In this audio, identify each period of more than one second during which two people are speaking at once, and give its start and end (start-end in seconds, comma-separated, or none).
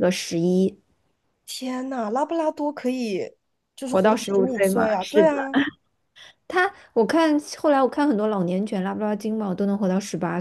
3.8-5.3